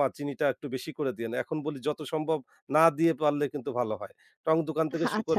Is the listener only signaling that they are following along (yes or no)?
yes